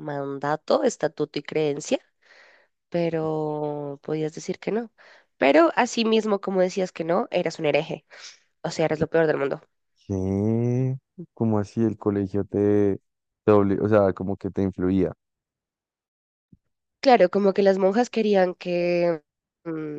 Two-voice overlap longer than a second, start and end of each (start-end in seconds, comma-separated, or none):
none